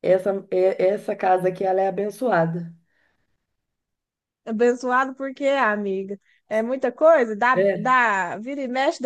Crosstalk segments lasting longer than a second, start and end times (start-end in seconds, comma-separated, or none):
none